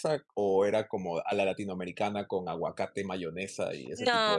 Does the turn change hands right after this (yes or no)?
yes